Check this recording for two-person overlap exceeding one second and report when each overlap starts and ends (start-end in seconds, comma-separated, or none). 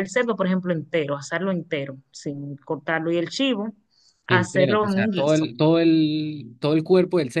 4.3-5.5